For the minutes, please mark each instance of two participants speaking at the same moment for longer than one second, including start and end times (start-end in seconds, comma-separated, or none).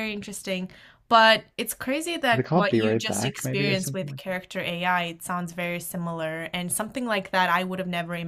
2.3-4.2